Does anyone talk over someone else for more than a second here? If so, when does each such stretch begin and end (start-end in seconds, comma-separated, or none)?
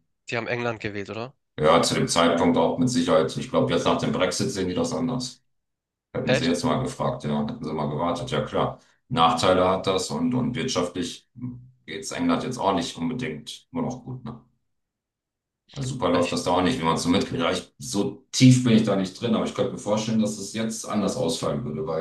none